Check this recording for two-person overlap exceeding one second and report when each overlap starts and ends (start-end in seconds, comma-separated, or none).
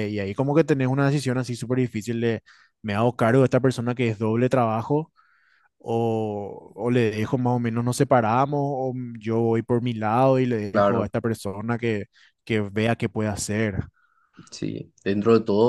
none